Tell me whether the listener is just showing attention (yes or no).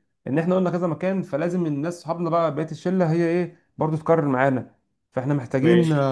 yes